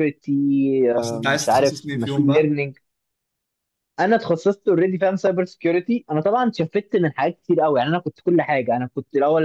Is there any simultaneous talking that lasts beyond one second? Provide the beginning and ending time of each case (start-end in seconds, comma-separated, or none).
1.3-2.6